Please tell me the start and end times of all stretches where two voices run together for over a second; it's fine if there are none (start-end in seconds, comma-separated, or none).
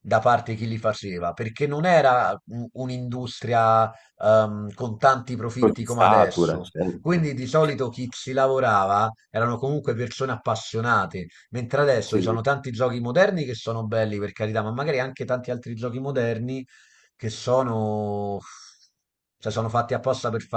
5.6-7.7